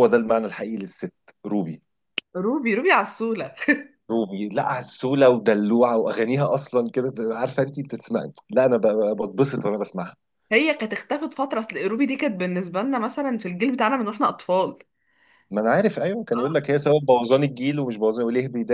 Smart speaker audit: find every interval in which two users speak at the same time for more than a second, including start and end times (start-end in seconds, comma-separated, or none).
none